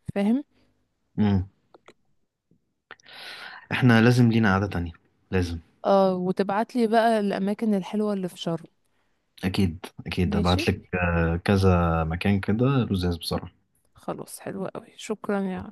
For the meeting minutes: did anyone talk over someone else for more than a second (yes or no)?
no